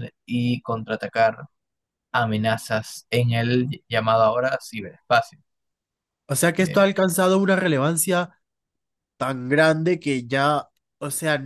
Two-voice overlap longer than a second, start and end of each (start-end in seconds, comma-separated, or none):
none